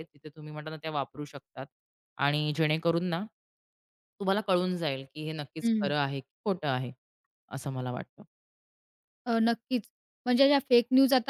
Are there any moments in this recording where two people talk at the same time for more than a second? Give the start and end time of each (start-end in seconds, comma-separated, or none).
none